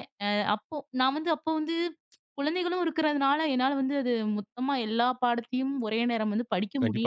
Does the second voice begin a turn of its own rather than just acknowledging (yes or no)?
yes